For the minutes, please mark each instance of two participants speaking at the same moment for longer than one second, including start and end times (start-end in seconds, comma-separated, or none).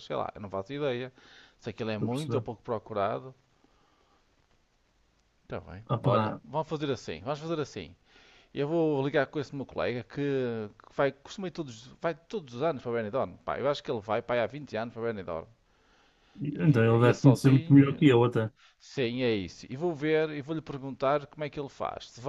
16.6-18.1